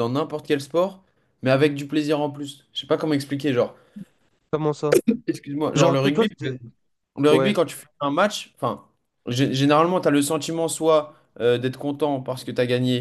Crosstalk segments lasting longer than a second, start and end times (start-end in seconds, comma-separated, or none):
none